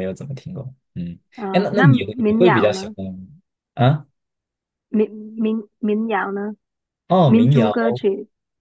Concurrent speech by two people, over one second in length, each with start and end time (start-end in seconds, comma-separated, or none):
1.4-3.0